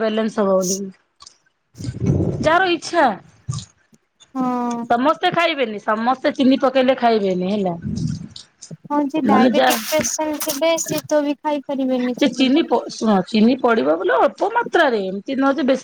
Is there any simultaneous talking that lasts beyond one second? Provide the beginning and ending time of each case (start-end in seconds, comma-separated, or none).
none